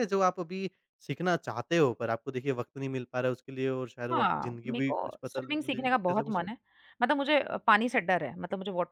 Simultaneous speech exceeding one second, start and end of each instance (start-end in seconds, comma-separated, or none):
4.1-6.5